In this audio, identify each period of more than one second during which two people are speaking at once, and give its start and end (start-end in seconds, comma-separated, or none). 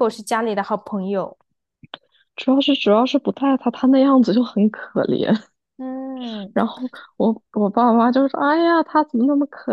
none